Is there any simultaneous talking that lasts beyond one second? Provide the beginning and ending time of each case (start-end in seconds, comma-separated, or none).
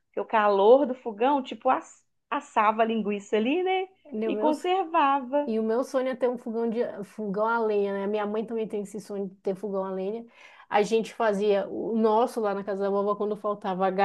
none